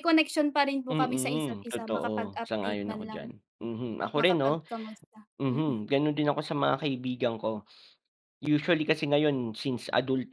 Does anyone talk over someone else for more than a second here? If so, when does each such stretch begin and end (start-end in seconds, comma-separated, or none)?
0.9-3.2